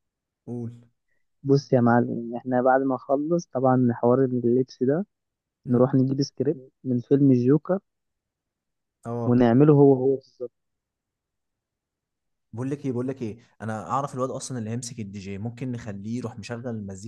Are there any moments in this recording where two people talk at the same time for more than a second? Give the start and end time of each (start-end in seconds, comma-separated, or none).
none